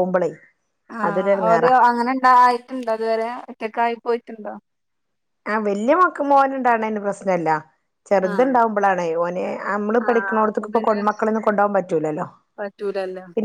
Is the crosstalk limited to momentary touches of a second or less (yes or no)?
yes